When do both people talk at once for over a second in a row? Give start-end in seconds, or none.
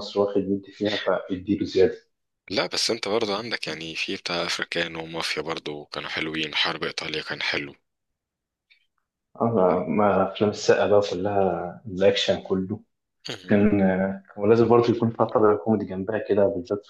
none